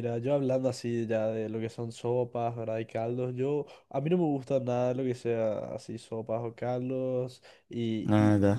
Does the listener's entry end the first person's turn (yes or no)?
no